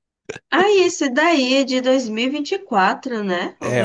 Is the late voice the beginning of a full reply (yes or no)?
yes